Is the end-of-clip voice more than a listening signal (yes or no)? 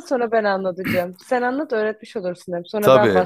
yes